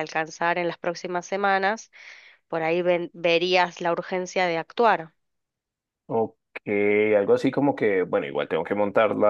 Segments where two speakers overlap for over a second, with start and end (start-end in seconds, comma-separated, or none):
none